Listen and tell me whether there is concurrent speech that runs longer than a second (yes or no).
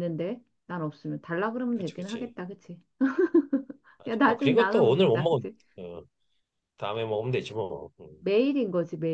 yes